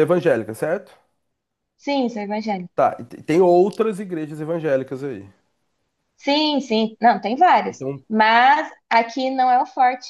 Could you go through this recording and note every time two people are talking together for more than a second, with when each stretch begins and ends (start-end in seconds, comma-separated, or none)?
none